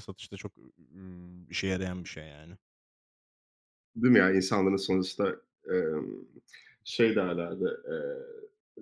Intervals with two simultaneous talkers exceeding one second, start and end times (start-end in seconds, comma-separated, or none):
none